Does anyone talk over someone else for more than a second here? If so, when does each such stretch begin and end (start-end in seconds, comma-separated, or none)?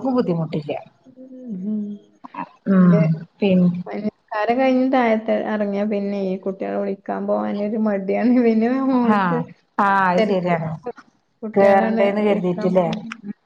11.6-12.9